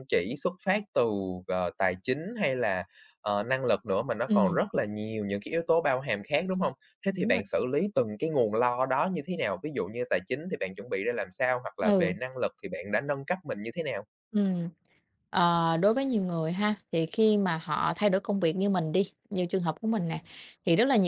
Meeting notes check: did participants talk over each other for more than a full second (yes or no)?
no